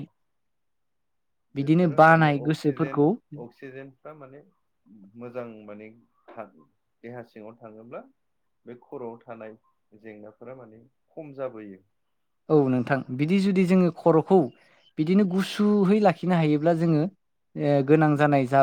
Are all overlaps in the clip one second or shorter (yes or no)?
no